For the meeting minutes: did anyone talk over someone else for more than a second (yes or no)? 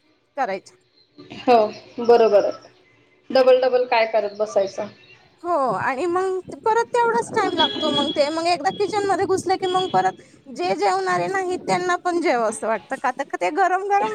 no